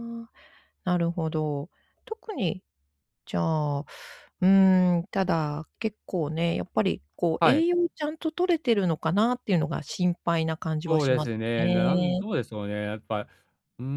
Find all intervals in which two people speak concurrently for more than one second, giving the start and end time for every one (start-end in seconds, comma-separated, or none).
10.9-12.2